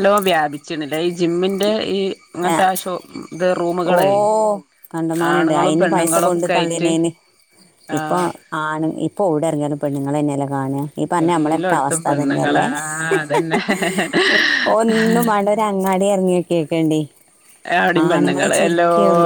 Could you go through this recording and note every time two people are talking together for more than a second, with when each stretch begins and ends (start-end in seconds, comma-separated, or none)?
5.3-6.9, 11.2-12.7